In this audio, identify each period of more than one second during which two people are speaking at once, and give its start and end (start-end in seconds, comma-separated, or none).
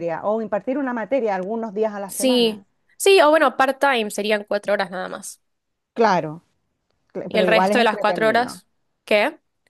7.3-8.6